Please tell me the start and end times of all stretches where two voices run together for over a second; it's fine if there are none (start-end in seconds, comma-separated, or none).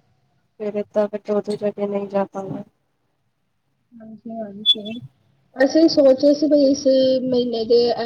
none